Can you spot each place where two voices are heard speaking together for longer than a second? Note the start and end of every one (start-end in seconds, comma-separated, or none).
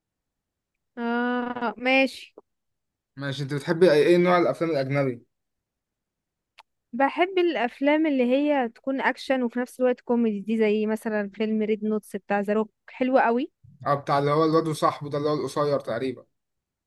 none